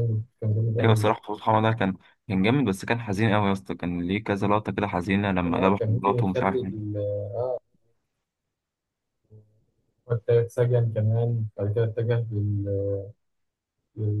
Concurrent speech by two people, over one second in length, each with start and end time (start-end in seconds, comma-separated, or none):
5.4-6.9